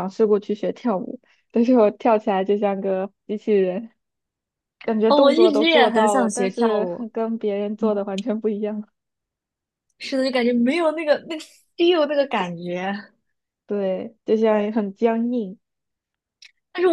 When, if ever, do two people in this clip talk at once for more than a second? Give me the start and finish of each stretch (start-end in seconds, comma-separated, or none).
5.1-7.0